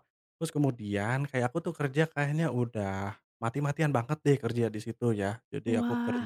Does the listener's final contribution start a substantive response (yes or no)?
no